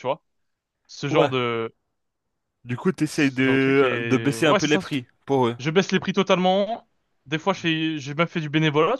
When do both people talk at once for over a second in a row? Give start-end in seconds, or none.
3.1-4.8